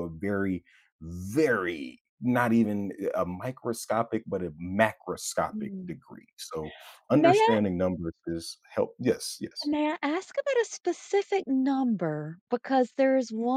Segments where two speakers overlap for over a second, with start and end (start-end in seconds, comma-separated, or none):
none